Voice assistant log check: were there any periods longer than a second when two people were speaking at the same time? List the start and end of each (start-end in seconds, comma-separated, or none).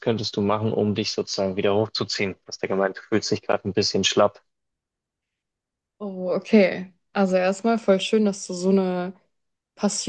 none